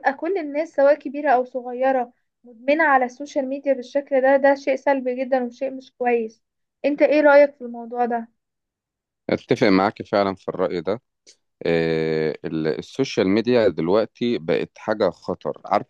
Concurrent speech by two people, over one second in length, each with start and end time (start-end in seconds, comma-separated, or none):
none